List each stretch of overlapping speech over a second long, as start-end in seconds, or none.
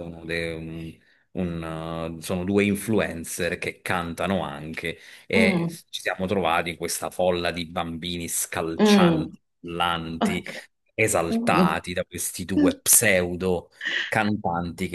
none